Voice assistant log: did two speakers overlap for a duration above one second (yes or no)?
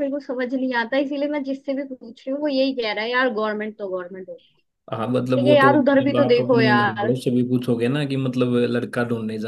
yes